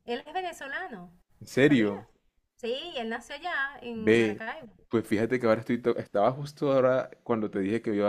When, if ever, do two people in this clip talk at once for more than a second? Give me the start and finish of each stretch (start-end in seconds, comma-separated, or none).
none